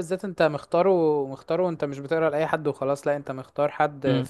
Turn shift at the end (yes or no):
no